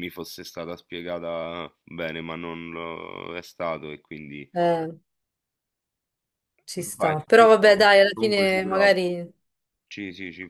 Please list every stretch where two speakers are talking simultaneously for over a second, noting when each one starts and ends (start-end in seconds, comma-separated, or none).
7.0-8.9